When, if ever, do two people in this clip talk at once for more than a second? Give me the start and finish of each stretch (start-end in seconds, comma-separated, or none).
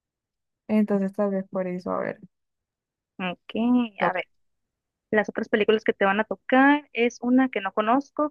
none